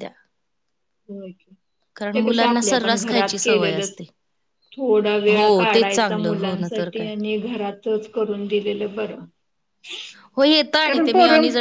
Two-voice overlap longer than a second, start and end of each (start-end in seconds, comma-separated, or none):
1.9-4.0, 5.3-7.1